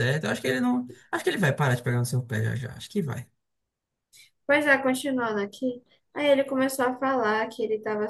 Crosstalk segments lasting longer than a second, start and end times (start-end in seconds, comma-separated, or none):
none